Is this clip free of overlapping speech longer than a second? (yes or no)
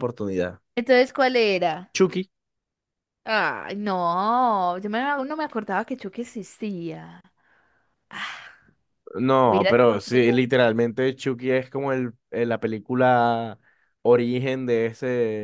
no